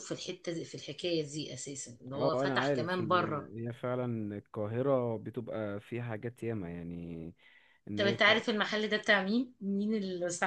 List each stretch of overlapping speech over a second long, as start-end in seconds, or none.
2.1-3.5